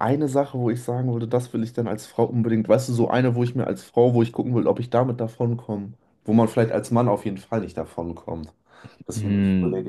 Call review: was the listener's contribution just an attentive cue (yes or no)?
no